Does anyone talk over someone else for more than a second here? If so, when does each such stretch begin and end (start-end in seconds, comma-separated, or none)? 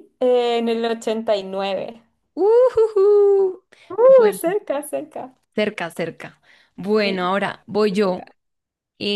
7.0-8.2